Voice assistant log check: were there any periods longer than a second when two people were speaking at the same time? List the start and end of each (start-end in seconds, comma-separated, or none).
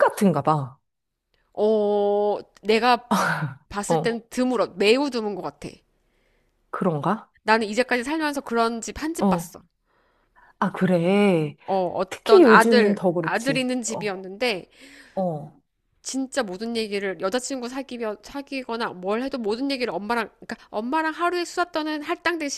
12.1-14.2